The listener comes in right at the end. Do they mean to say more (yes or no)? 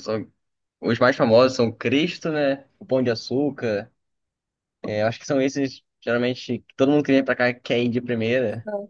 no